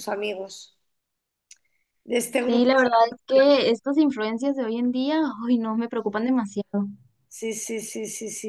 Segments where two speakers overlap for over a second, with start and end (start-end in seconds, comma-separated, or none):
none